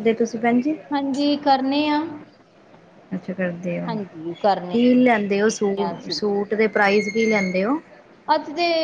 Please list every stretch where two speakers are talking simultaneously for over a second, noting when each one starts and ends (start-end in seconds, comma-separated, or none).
none